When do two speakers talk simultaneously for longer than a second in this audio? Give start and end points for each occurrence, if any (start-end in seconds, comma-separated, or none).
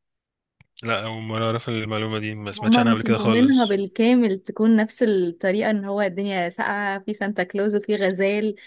2.5-3.8